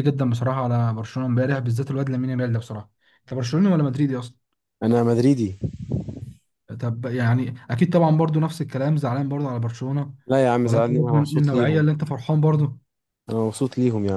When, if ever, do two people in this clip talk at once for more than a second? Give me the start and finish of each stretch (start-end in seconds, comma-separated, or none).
10.7-11.8